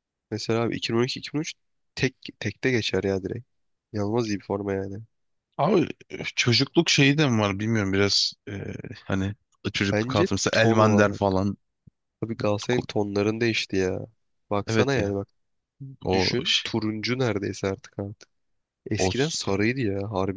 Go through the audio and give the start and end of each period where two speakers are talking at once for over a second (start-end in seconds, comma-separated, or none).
9.9-11.2